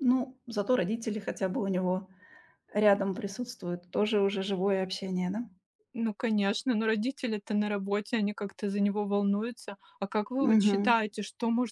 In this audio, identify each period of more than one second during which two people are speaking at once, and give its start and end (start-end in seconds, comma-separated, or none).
none